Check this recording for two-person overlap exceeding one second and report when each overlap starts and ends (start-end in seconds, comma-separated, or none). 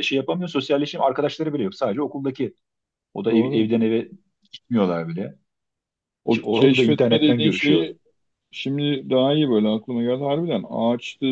6.3-7.9